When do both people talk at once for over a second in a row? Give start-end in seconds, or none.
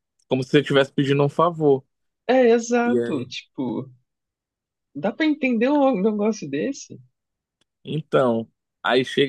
none